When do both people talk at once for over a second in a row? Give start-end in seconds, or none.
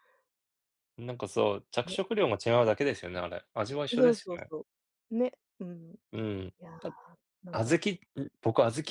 none